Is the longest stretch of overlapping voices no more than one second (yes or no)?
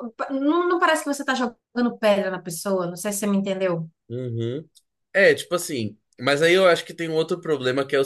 yes